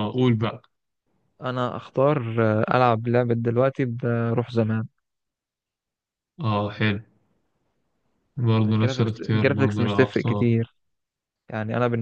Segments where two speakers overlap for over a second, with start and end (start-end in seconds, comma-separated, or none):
8.7-10.5